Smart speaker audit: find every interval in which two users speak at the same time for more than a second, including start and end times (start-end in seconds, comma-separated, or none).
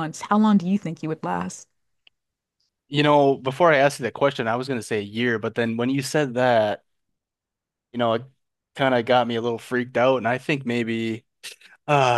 none